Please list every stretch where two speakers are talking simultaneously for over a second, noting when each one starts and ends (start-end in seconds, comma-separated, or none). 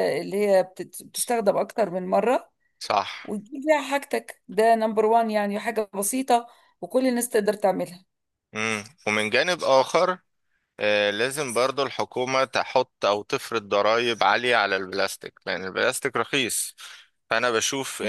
none